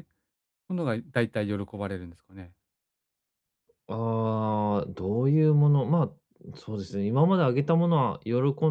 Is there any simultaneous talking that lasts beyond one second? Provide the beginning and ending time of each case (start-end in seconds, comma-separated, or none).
none